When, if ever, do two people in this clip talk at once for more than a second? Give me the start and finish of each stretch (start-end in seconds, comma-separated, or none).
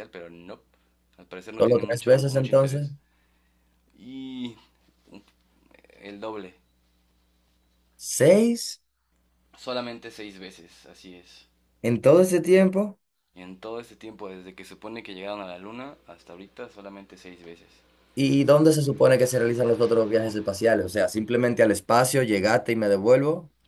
1.5-2.9